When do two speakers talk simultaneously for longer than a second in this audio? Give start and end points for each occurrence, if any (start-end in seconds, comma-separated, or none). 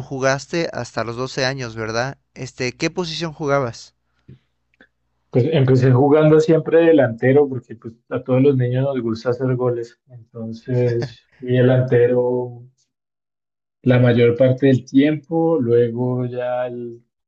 none